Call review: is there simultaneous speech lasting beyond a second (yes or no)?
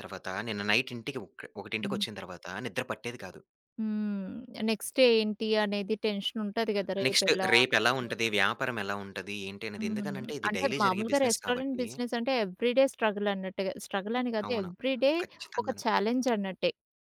yes